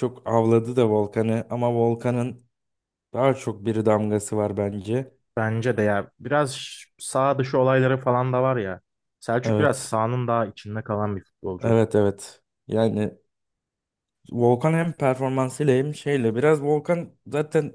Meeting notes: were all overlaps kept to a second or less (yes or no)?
yes